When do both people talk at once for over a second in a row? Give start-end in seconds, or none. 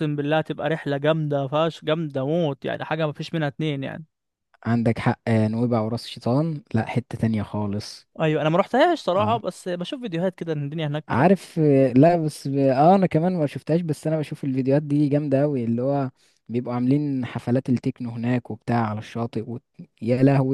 none